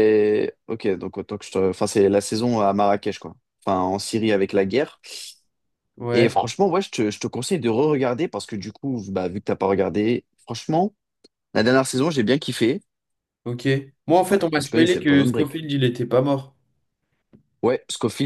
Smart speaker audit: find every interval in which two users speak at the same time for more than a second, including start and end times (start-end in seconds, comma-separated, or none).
14.3-15.6